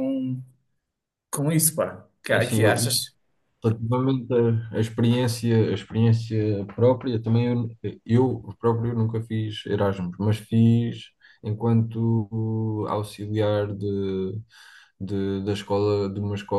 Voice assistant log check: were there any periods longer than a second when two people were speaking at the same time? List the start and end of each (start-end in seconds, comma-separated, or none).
none